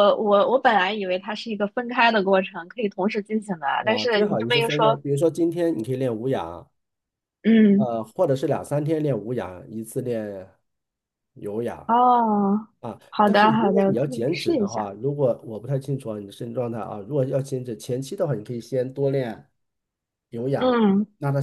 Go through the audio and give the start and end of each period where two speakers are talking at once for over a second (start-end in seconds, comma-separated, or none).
3.8-5.0, 13.1-14.9